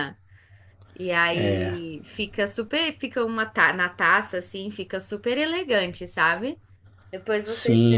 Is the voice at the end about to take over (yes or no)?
yes